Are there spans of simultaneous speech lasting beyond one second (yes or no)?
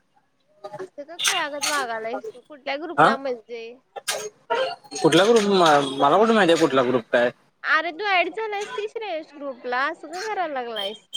no